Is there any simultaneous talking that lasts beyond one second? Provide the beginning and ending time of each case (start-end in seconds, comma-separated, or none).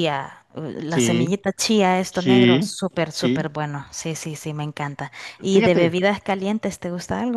2.1-3.5